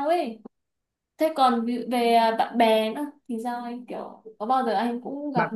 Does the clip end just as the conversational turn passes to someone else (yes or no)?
yes